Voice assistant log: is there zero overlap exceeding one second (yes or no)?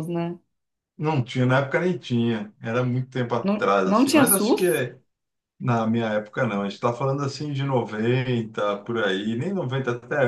no